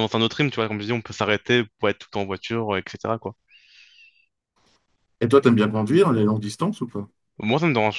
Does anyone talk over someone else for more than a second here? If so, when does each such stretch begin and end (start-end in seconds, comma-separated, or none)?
none